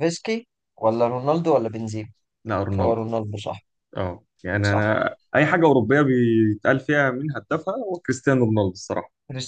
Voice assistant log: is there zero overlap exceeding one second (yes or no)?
yes